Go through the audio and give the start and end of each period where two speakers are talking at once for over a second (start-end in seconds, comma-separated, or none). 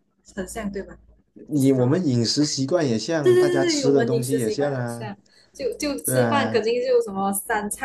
3.2-5.1